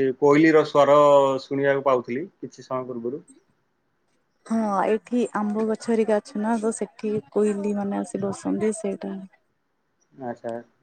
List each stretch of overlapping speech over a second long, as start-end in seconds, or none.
none